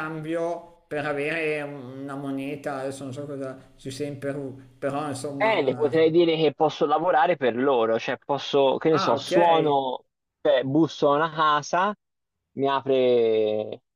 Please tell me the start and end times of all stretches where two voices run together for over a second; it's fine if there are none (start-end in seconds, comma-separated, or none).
none